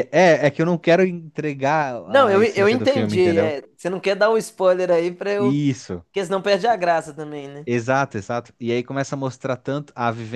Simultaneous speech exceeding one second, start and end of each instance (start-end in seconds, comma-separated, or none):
2.1-3.6